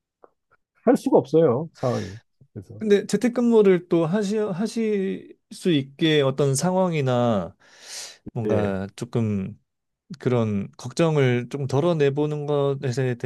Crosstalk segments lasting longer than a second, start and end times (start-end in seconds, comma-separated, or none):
none